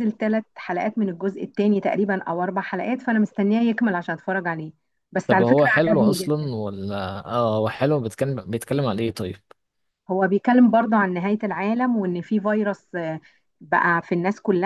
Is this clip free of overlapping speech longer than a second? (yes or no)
no